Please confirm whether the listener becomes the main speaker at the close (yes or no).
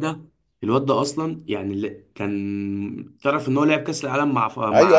yes